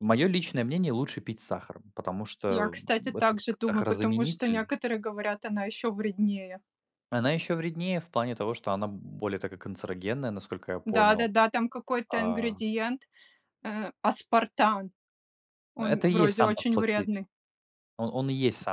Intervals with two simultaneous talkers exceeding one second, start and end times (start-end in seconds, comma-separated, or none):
2.5-4.7, 15.8-17.2